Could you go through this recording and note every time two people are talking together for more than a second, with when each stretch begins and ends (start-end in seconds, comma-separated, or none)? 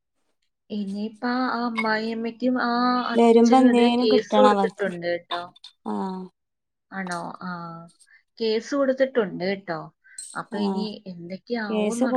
3.2-4.9